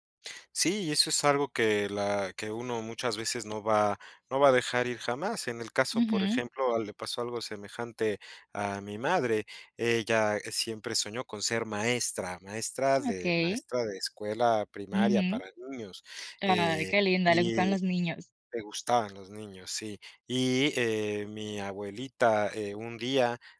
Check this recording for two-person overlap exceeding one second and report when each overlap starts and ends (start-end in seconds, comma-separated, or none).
16.4-17.8